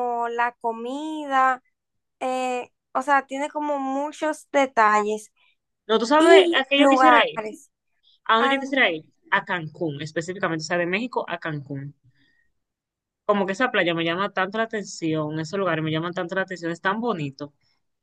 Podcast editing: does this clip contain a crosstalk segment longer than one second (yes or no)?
yes